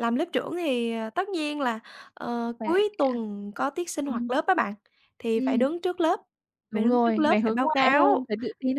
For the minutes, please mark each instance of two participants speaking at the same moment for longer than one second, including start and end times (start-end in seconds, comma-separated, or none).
6.7-8.3